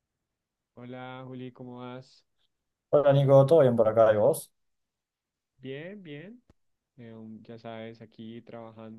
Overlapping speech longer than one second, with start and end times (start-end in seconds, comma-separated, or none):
none